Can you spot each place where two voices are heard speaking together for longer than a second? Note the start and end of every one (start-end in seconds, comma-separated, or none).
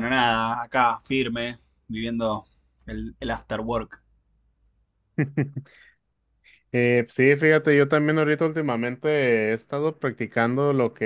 none